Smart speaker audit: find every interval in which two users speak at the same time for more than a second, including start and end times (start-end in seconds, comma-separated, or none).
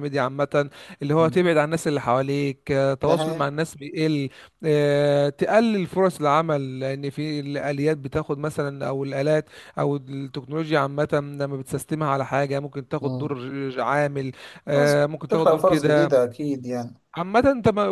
14.7-16.1